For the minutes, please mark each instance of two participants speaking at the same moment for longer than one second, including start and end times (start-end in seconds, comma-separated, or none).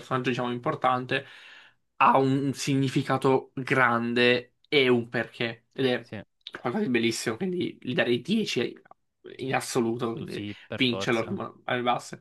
10.0-11.4